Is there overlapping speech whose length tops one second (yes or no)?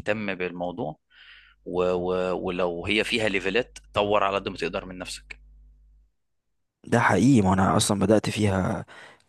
no